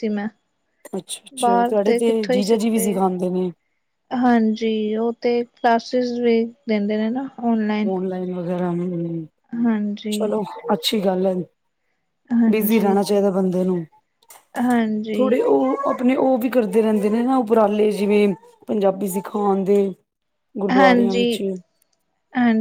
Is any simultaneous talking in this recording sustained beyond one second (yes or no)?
yes